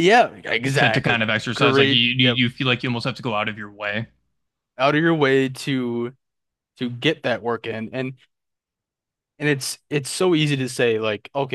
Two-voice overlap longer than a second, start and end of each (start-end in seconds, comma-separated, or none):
0.7-2.4